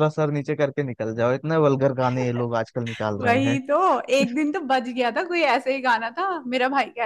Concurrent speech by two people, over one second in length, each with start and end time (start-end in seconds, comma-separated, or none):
none